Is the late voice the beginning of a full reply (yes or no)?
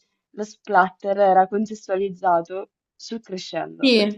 yes